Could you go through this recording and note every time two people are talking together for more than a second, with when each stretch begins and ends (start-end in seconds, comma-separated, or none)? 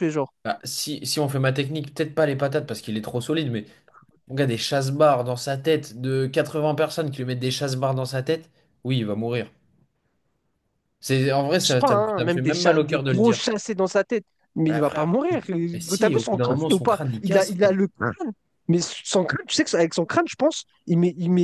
11.6-13.4, 15.7-17.8